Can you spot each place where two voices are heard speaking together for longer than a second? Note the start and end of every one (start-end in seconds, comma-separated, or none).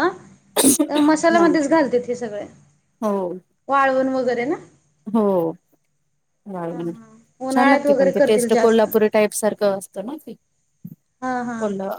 6.8-8.8